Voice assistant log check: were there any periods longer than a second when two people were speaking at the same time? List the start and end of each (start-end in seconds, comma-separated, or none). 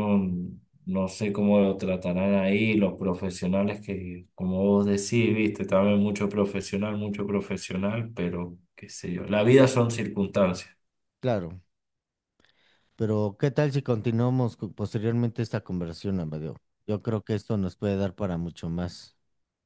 none